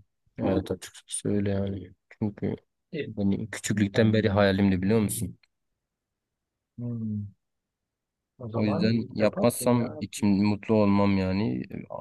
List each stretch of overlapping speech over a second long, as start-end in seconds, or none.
8.5-10.0